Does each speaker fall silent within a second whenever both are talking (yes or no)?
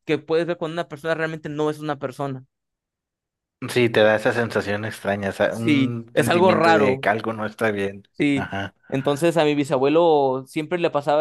no